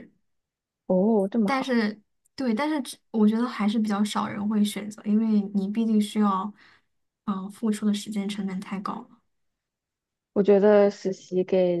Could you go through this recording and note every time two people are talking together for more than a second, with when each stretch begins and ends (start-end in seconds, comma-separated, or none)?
none